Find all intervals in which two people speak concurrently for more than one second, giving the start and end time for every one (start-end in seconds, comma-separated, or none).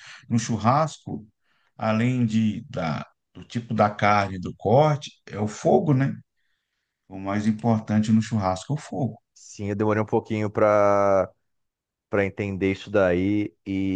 none